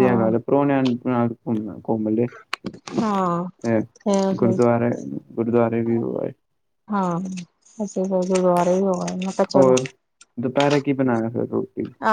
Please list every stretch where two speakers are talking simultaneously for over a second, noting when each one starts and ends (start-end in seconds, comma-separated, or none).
none